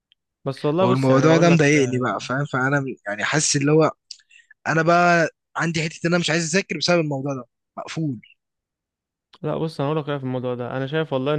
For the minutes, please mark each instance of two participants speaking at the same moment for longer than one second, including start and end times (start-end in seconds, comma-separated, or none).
0.8-2.1